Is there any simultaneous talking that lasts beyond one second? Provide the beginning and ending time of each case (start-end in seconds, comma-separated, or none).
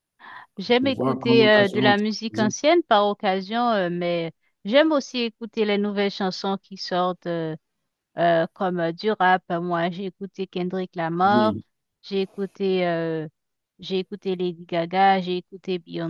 0.8-2.5